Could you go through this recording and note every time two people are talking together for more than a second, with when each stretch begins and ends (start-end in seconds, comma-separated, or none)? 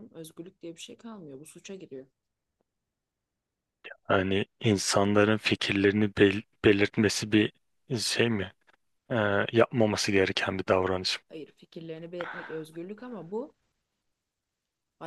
none